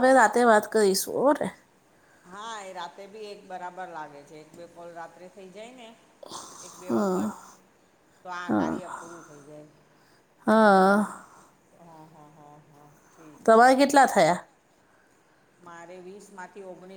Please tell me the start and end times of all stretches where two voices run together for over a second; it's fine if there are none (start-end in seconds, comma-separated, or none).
none